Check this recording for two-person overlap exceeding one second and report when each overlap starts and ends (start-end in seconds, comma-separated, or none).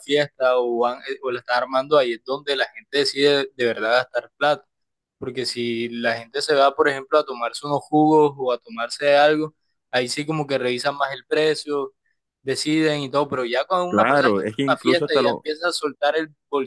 13.9-15.4